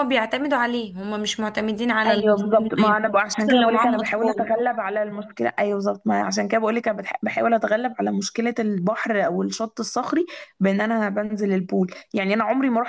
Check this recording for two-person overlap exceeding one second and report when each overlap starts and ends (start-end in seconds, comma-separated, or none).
2.0-4.5